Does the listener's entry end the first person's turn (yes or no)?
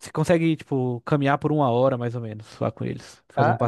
yes